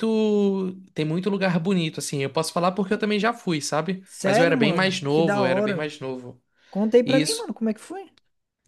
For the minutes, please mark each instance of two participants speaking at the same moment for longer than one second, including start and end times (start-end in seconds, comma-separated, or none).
4.0-5.9